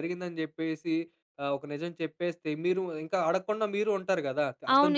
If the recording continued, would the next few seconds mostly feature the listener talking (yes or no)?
yes